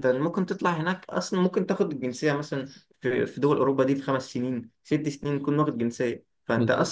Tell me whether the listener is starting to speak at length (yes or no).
no